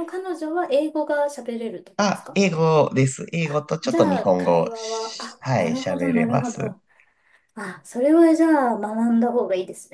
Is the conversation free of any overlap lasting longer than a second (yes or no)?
no